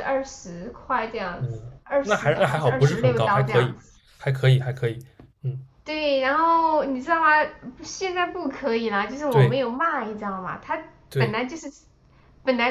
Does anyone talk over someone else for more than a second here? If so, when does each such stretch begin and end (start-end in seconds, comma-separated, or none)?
1.4-3.7